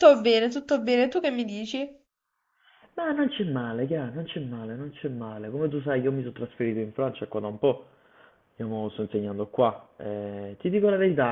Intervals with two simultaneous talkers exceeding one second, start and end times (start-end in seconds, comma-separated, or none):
none